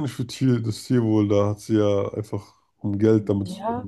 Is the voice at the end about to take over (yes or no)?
yes